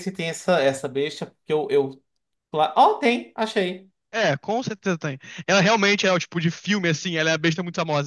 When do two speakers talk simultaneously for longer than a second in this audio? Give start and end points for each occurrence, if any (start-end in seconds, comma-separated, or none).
none